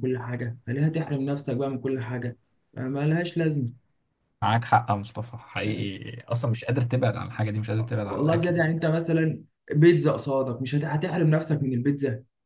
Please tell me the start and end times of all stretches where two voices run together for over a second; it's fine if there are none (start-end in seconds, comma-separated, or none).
none